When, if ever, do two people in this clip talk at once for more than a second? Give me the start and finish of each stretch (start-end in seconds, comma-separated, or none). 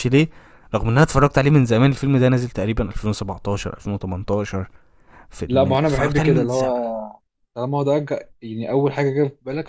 5.5-6.7